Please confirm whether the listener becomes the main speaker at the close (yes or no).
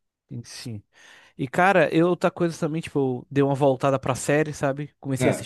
no